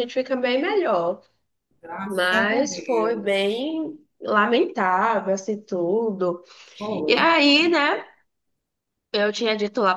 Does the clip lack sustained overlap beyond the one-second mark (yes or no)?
no